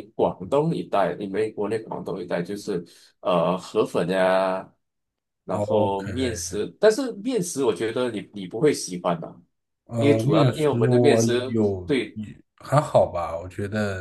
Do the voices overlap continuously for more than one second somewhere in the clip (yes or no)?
yes